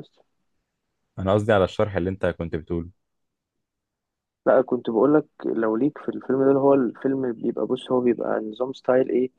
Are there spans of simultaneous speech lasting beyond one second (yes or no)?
no